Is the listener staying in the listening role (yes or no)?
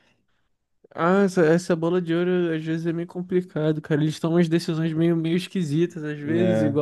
yes